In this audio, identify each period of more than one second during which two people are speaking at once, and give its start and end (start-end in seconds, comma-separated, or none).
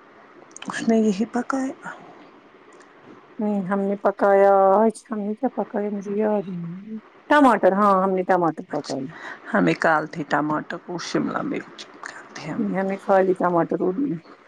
none